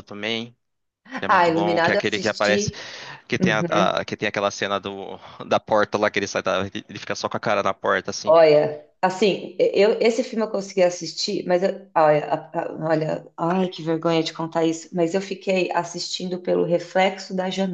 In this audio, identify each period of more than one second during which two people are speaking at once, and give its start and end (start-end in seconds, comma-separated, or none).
1.2-2.7